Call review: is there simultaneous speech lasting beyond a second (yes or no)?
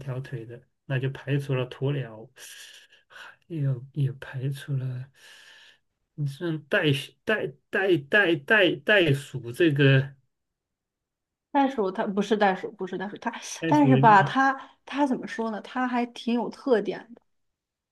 no